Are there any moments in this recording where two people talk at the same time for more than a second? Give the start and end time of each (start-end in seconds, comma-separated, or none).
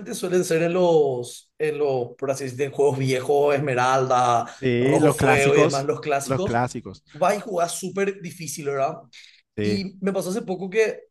4.6-6.6